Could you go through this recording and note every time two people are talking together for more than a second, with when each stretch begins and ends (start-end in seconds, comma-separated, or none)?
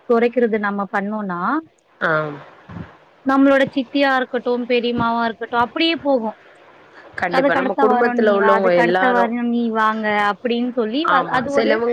7.4-9.2